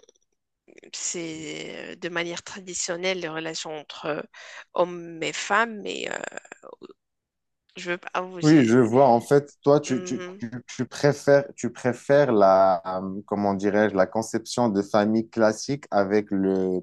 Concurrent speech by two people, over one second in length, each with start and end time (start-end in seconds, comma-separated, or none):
none